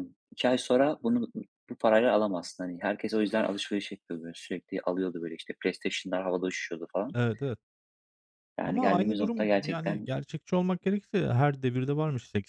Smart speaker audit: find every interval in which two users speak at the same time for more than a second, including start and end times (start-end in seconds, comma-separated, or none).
8.7-10.1